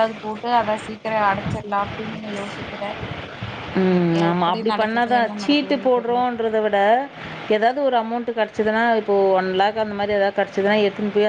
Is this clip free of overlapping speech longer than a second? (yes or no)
no